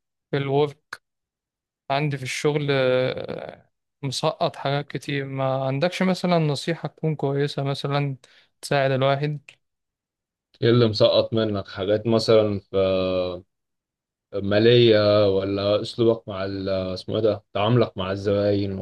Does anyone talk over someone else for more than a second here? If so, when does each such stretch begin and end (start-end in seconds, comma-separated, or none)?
none